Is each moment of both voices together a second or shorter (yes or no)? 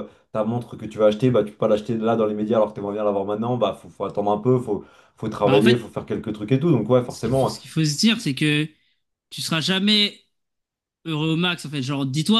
yes